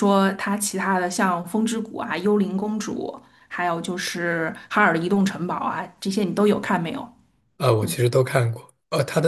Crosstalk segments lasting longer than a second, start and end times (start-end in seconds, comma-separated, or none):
none